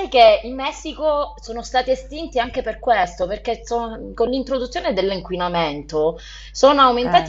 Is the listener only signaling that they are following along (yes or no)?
yes